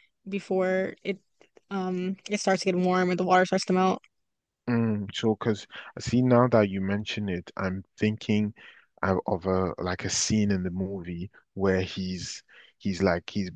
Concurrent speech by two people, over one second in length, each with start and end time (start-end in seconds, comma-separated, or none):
none